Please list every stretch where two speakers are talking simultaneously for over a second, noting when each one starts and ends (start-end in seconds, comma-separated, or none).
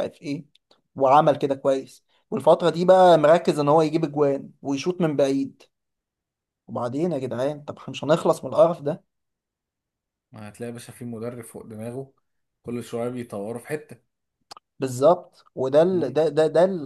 none